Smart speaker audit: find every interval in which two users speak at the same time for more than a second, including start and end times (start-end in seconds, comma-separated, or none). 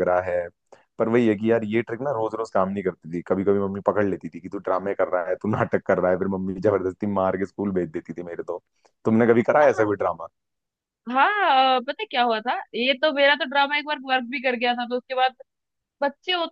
none